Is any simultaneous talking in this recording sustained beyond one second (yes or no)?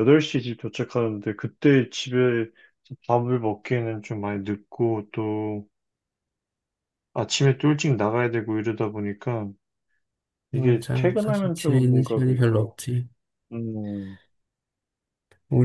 yes